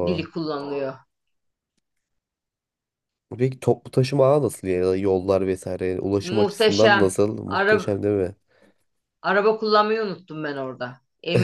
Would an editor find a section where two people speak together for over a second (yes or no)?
yes